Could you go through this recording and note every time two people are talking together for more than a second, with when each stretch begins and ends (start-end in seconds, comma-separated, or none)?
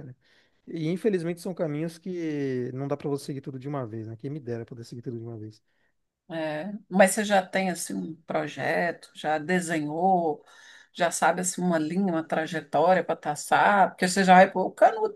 none